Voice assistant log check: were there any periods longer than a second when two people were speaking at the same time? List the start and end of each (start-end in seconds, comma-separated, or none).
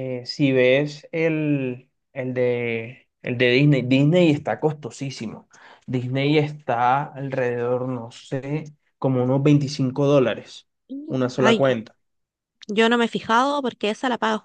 none